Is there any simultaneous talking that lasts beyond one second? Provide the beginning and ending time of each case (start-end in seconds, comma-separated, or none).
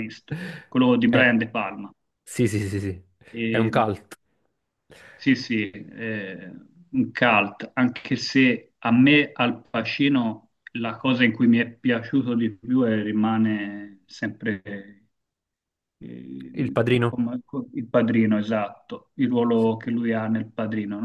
none